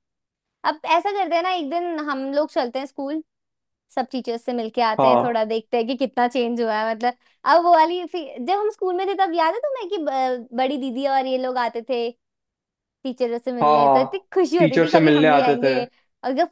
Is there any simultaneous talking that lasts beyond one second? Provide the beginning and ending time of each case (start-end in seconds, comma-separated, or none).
13.6-15.7